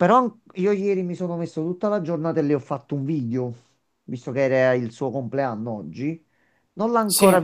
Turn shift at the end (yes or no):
no